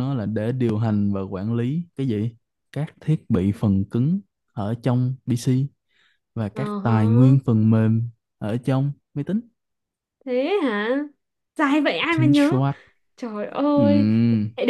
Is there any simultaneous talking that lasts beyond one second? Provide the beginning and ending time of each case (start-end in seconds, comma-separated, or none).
none